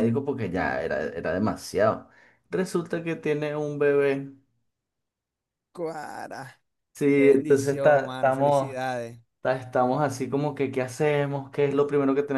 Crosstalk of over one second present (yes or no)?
yes